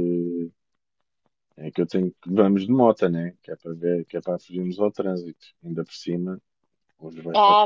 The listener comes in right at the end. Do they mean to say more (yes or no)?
yes